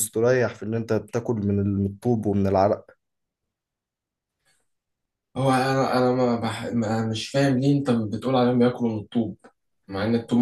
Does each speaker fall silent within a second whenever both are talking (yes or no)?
yes